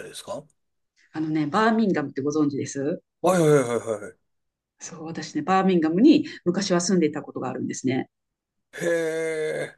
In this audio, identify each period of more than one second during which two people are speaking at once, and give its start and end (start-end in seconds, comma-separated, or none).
none